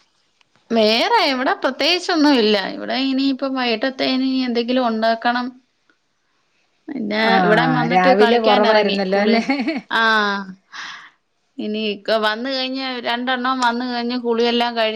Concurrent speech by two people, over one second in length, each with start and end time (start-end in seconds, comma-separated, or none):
7.3-9.3